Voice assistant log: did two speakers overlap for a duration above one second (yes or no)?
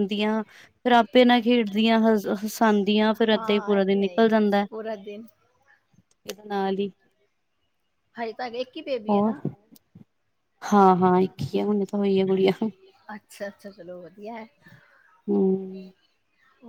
yes